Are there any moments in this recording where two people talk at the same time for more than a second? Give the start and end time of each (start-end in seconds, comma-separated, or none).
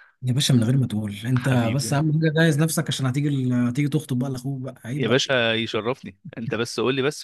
none